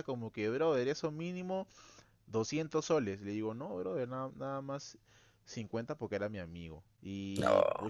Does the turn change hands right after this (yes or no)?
no